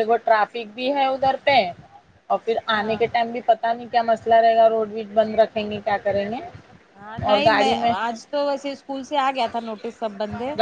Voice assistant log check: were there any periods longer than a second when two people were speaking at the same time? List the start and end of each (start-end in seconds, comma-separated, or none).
none